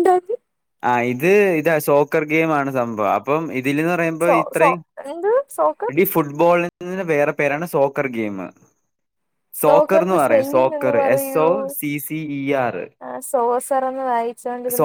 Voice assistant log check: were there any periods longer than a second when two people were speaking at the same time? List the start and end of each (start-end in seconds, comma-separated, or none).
9.6-10.9